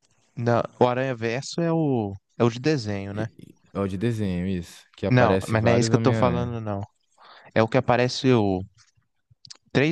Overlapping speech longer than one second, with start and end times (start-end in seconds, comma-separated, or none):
5.1-6.5